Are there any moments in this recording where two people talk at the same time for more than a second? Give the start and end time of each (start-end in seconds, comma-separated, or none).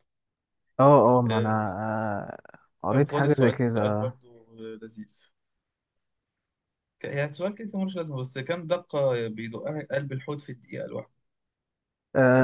2.9-4.1